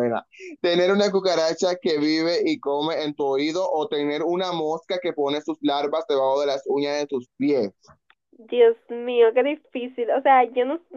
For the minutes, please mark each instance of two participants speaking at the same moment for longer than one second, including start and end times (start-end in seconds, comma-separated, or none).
none